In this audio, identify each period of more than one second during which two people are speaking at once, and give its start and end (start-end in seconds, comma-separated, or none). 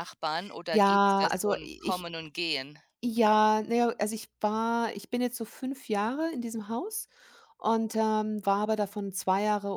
0.7-2.1